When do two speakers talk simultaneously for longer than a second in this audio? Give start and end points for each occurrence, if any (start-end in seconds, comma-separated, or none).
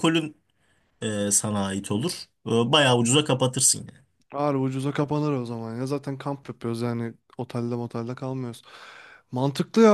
none